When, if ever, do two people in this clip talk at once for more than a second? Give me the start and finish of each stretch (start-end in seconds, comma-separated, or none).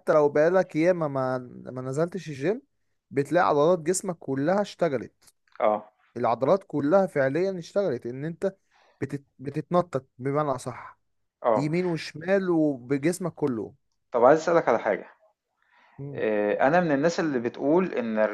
none